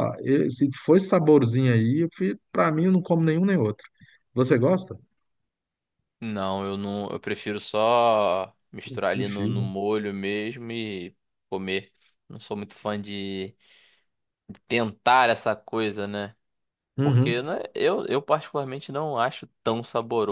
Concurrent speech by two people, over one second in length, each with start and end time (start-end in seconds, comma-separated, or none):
none